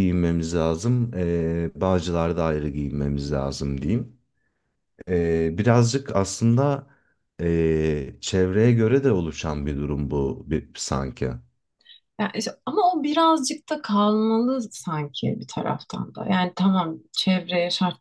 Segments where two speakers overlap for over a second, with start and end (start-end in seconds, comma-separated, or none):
none